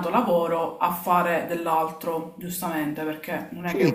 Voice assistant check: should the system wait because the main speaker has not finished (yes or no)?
no